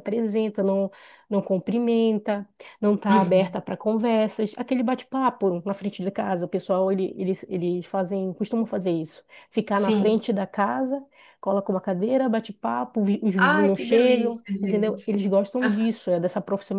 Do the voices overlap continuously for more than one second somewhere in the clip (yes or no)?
yes